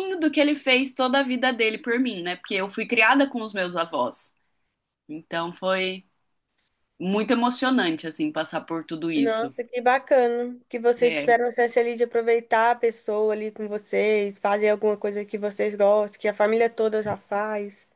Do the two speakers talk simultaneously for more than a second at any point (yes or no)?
no